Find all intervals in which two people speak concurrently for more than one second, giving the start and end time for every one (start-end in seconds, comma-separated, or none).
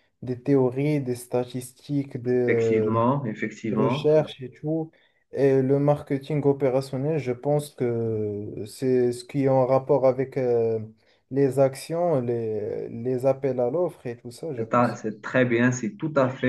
none